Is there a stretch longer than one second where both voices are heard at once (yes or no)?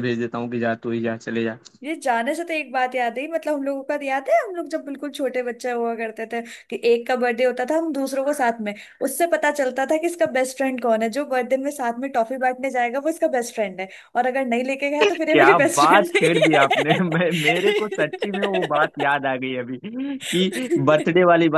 yes